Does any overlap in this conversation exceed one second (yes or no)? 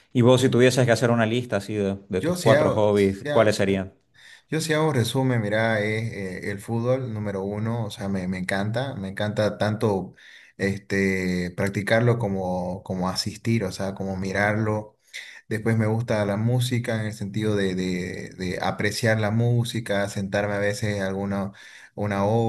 yes